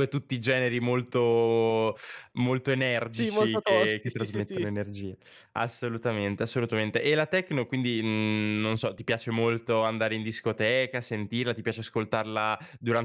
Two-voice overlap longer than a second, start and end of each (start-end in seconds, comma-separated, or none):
3.1-4.7